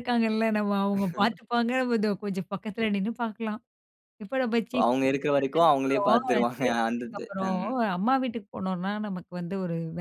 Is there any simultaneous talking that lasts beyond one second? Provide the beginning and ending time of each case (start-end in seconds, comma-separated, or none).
4.8-7.6